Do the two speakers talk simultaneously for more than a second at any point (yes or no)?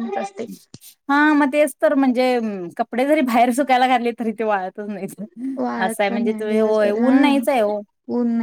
yes